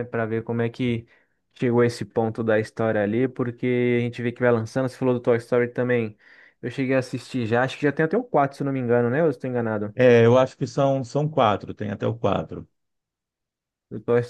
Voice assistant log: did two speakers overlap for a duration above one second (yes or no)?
no